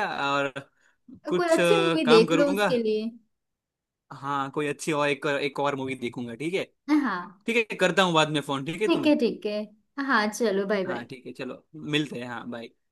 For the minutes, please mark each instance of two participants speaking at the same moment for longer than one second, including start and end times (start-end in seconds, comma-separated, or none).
1.3-2.7